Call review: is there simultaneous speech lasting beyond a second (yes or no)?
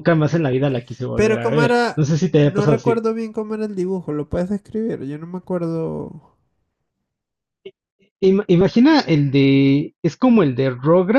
yes